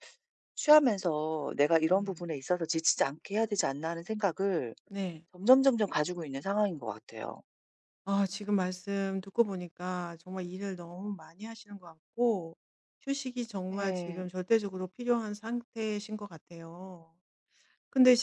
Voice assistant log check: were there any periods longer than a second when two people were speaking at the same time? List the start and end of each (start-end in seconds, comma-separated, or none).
none